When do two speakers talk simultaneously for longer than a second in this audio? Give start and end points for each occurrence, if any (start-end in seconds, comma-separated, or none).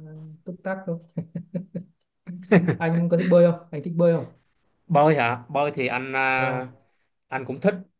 none